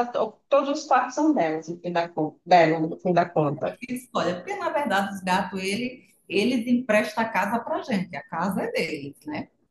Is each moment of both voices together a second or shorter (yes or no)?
yes